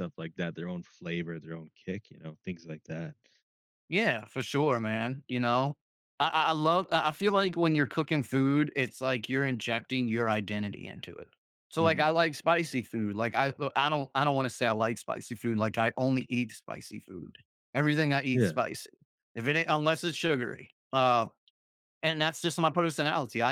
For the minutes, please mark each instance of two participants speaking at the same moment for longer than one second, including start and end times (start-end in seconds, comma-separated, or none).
none